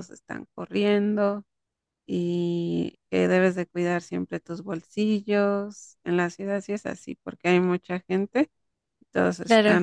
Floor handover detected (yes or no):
no